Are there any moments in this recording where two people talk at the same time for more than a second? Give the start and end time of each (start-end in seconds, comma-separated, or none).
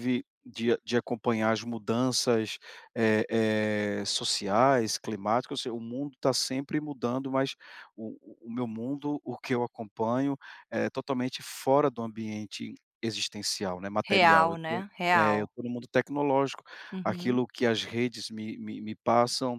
14.1-15.5